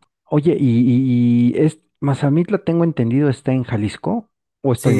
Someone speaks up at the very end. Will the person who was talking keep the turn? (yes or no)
no